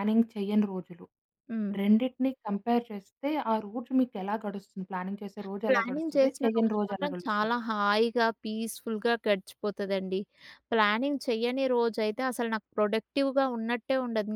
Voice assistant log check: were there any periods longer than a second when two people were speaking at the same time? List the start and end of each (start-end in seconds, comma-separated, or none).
5.7-7.5